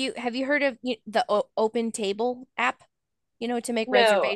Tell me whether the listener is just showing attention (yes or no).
no